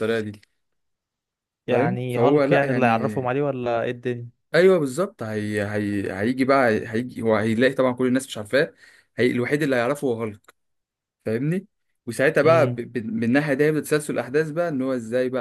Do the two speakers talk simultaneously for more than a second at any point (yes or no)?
yes